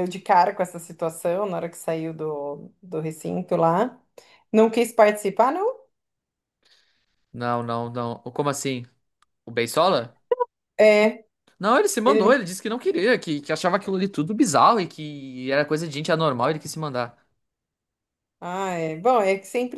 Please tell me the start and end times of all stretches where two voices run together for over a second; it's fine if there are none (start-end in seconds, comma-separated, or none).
none